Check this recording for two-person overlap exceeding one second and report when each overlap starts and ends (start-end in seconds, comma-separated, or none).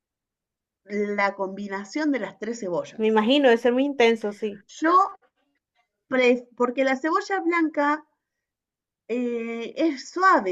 none